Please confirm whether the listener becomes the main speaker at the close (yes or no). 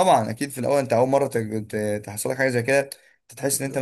no